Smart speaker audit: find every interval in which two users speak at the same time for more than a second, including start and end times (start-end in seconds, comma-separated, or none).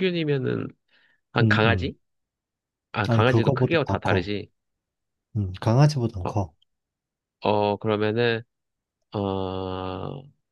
3.1-4.3